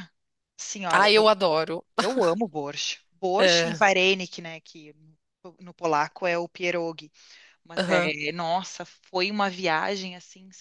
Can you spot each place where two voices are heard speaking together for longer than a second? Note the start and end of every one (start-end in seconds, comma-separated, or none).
none